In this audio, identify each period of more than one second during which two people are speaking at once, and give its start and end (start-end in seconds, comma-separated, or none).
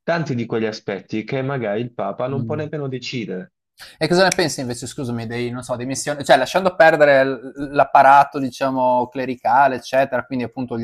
none